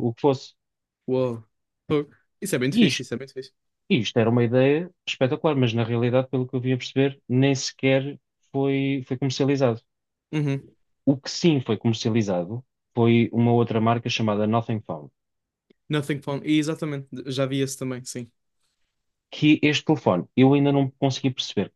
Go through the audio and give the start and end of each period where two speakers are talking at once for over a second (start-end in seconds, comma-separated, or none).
none